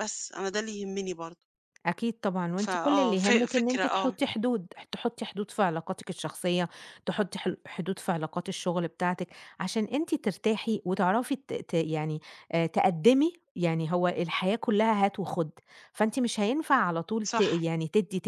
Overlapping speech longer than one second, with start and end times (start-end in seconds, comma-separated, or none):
2.6-4.2